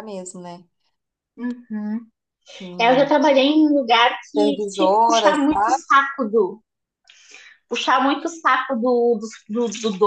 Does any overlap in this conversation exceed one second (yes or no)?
yes